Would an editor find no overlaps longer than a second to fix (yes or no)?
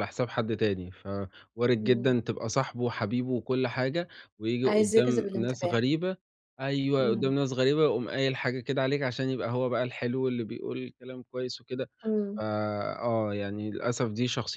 no